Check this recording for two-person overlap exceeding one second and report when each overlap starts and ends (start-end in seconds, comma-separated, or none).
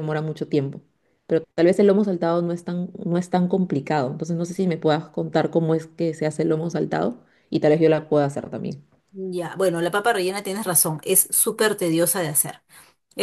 none